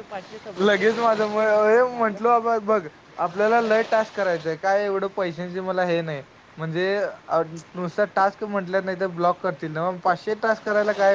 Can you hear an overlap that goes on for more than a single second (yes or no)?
yes